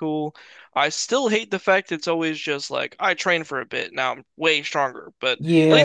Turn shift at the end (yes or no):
yes